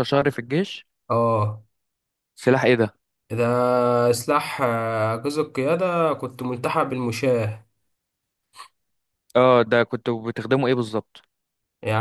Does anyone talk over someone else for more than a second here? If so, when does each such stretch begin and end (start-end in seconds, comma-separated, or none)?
none